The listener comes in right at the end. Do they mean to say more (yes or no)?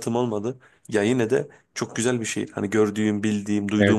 no